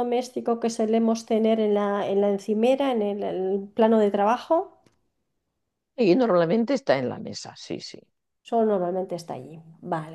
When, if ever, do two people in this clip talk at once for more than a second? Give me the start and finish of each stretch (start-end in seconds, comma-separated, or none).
none